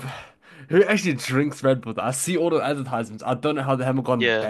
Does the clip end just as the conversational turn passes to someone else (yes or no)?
yes